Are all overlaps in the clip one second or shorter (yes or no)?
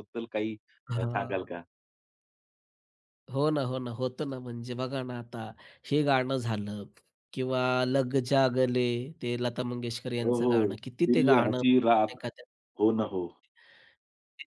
no